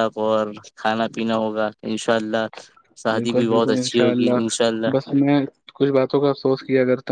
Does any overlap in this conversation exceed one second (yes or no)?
yes